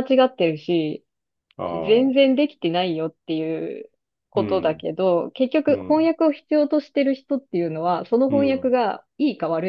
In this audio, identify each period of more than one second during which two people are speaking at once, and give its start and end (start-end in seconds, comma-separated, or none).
none